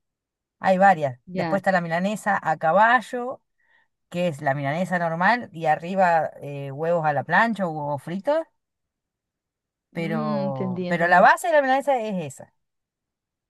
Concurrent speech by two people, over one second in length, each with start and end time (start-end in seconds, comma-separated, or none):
9.9-11.2